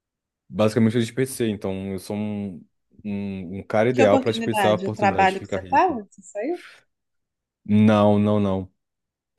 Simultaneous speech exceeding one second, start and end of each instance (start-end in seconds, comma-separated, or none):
3.9-6.0